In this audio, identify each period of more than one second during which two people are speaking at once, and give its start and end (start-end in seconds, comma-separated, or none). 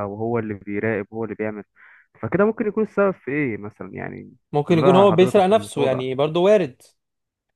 4.7-6.1